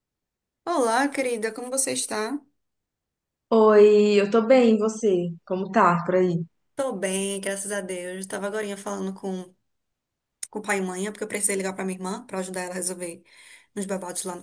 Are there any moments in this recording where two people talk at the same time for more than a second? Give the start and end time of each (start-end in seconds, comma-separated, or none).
none